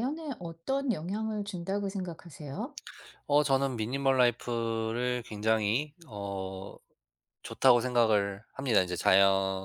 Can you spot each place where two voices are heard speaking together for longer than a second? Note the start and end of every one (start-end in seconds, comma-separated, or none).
none